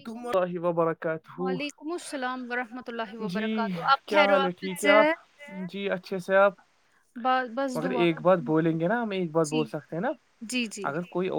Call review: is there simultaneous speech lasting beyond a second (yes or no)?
yes